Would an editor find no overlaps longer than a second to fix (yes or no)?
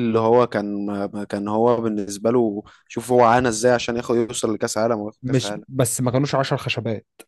yes